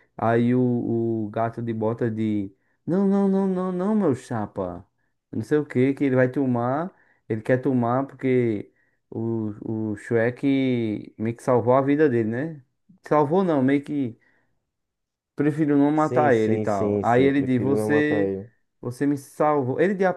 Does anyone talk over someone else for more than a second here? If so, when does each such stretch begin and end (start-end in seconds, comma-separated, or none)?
15.9-18.3